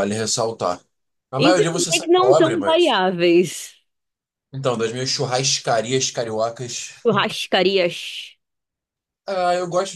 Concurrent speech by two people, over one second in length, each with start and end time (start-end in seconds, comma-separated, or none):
1.4-2.9